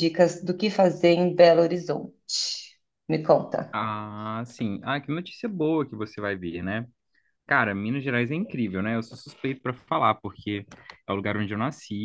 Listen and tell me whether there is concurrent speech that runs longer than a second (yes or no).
no